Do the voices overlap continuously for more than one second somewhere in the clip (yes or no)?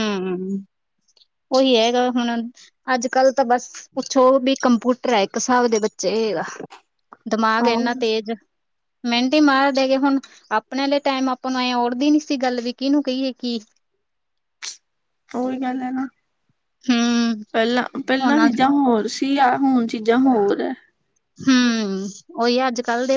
no